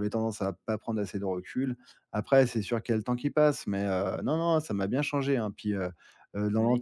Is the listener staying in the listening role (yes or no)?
yes